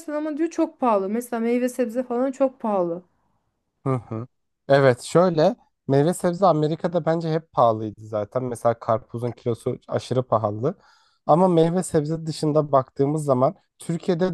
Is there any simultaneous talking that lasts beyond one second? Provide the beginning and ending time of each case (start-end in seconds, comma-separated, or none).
none